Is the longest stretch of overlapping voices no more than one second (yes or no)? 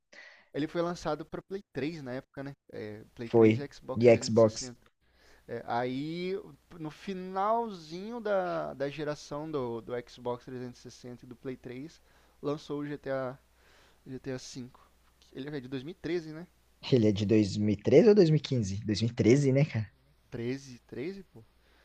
no